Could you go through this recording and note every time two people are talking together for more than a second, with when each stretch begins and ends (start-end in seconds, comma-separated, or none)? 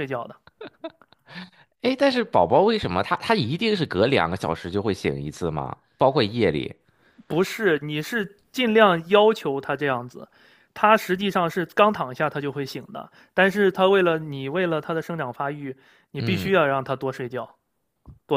none